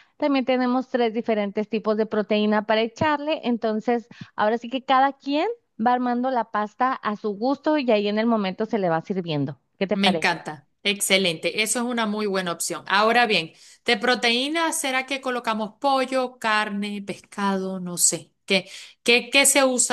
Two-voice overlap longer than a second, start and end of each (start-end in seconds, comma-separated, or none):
none